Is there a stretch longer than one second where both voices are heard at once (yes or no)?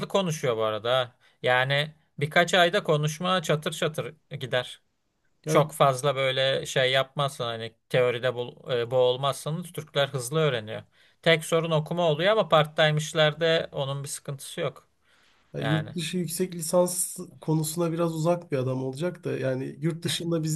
no